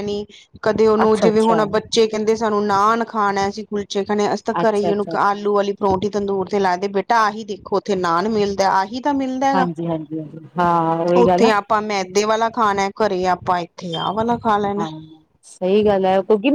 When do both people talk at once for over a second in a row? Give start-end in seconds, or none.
none